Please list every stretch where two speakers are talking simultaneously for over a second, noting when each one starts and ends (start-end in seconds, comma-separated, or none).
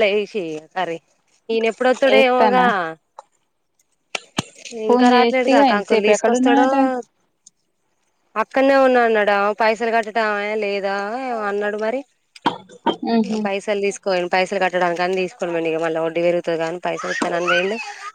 4.9-6.7